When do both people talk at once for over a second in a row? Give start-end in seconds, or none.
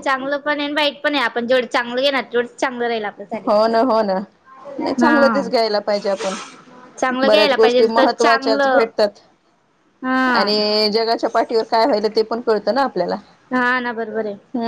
7.3-8.9